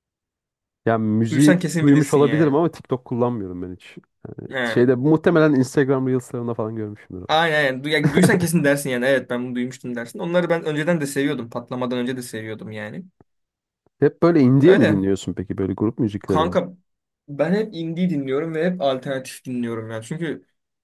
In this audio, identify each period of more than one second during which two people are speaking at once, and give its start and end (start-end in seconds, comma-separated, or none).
1.3-2.6